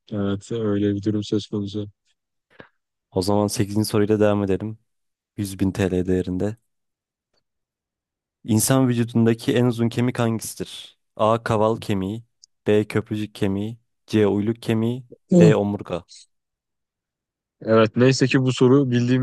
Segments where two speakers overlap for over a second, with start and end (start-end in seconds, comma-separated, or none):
none